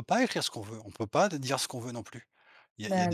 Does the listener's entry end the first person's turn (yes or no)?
no